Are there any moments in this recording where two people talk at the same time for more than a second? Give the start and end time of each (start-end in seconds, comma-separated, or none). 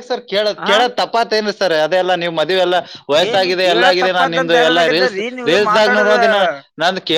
3.3-6.2